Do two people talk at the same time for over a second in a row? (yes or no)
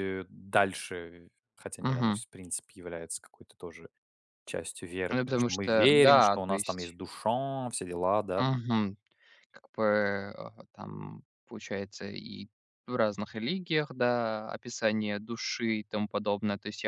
yes